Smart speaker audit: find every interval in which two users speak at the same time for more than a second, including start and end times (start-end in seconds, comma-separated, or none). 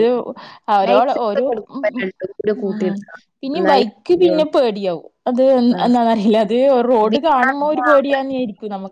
0.9-2.9